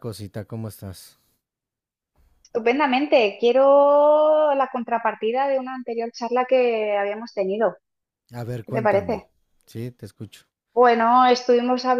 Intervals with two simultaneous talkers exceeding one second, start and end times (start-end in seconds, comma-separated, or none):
none